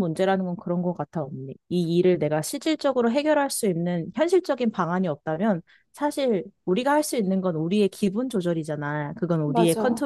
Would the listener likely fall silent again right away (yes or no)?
yes